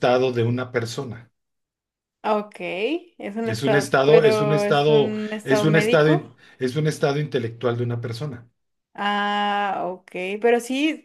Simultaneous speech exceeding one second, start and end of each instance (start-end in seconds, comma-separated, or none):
3.4-6.3